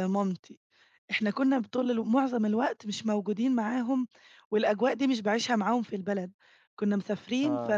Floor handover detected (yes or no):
no